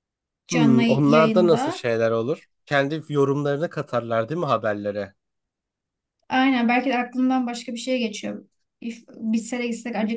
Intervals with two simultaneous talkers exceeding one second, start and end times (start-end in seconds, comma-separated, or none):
0.5-1.9